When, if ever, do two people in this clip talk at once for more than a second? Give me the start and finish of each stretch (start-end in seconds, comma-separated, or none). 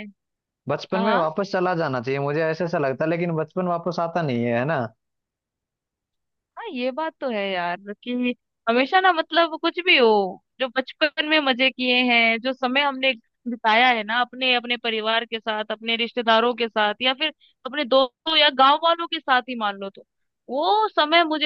none